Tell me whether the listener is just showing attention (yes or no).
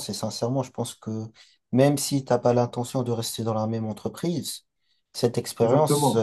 yes